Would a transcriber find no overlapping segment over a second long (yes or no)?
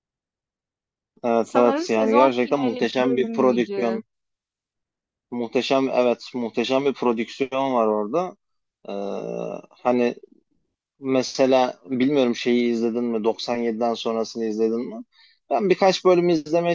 no